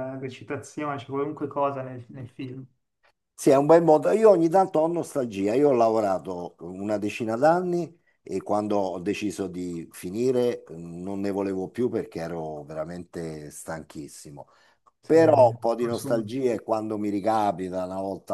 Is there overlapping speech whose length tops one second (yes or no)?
yes